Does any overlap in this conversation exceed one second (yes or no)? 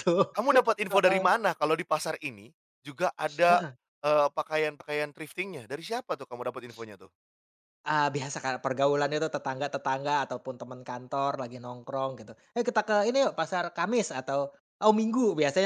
no